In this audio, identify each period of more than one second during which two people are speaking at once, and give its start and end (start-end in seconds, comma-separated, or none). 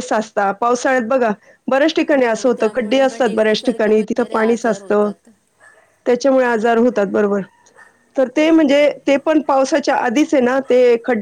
2.1-5.1